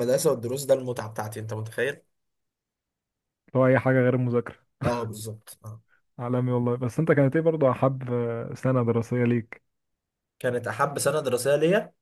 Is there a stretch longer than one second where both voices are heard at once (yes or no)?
no